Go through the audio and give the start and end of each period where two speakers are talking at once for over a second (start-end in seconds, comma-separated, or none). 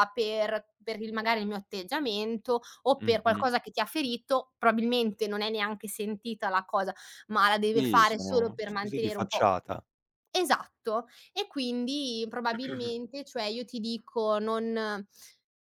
7.7-9.5